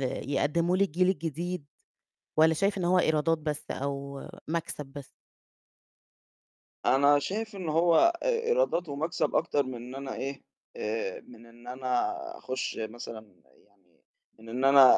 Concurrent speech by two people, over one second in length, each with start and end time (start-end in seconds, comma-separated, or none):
none